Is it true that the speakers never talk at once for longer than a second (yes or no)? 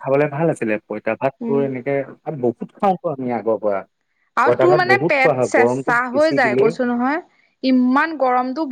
no